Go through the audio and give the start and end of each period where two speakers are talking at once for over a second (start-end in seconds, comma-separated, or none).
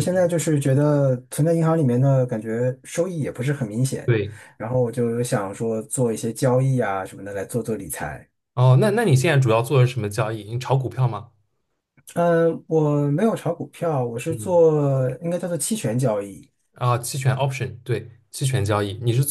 none